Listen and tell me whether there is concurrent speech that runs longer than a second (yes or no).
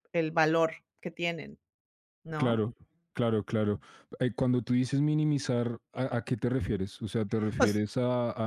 no